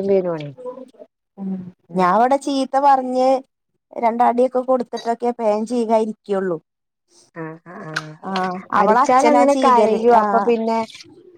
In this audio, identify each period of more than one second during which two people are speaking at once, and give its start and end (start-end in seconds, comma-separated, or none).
8.8-10.5